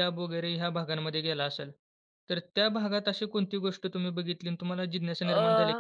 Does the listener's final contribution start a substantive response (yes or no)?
no